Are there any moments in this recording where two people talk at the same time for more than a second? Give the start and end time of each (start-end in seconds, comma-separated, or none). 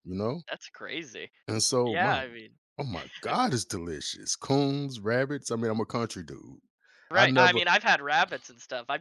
none